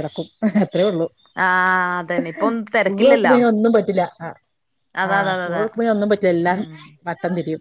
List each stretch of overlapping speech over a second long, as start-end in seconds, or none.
none